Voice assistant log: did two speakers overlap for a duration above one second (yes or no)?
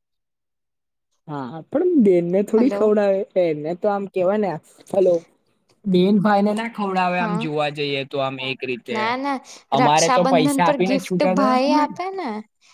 yes